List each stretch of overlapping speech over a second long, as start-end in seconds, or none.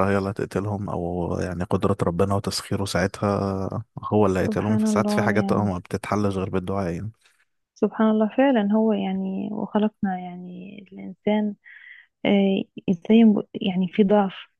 4.4-5.7